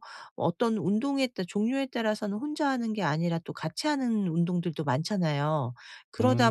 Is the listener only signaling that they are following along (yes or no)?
yes